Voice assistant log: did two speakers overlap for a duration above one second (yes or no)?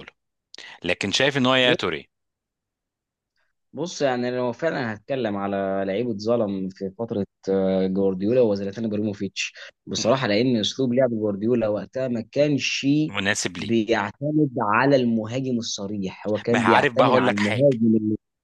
yes